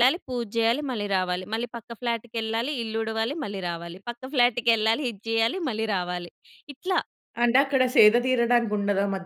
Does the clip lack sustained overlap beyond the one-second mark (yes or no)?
yes